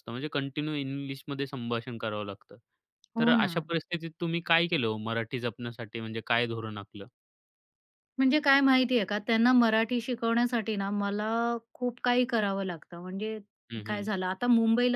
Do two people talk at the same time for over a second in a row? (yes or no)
no